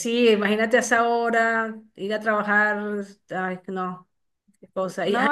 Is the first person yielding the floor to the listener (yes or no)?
no